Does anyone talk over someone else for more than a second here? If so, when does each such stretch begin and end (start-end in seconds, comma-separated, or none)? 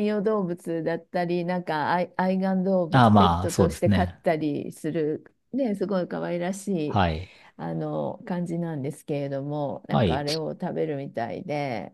2.9-4.2